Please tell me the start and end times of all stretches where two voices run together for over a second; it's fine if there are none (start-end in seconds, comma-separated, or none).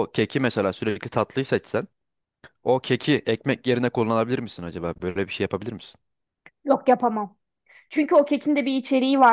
none